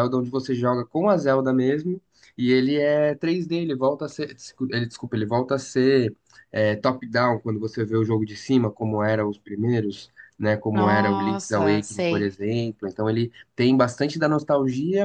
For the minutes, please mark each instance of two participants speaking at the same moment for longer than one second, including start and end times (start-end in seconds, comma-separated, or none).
10.7-12.3